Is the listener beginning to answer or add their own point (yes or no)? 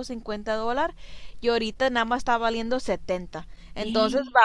no